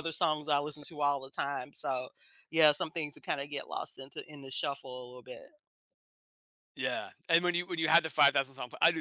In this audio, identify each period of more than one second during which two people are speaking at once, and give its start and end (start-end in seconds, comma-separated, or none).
none